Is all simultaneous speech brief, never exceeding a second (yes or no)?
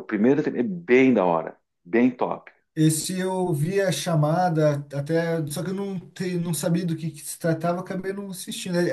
yes